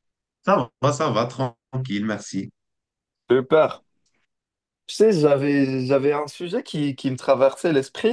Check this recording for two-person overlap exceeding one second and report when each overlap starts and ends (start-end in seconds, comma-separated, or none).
none